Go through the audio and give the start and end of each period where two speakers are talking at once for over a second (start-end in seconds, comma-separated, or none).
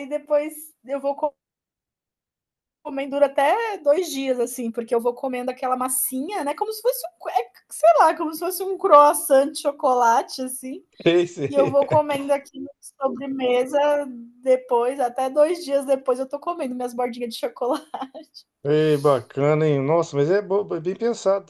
none